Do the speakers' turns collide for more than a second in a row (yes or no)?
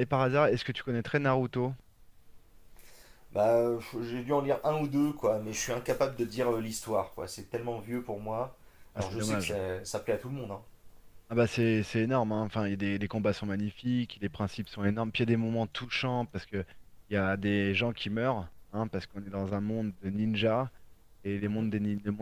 no